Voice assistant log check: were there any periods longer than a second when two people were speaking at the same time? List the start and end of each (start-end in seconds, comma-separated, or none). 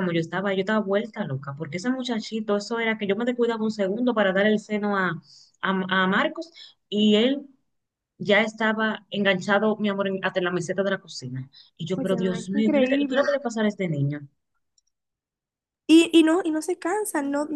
12.0-13.3